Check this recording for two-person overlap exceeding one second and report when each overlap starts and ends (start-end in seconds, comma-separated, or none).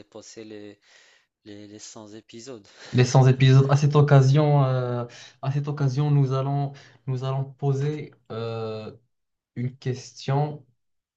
none